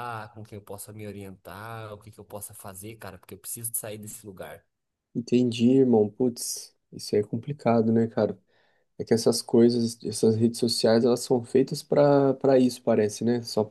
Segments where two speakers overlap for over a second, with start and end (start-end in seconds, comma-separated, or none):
none